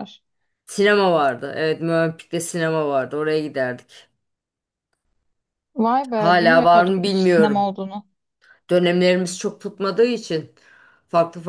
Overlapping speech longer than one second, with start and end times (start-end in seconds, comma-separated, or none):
6.1-7.7